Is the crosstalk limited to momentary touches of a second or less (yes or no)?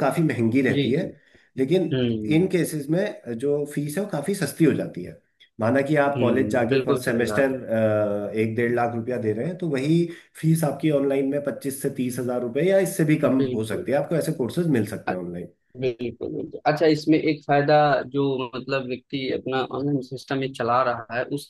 no